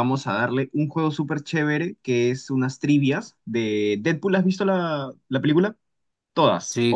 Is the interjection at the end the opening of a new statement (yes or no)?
yes